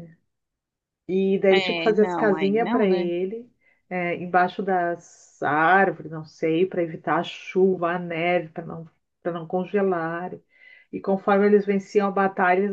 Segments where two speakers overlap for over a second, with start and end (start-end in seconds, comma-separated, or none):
1.5-3.1